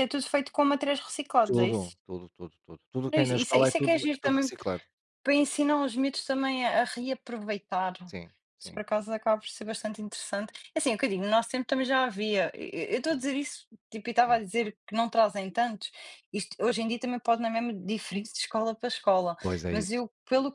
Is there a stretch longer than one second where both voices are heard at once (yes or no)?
yes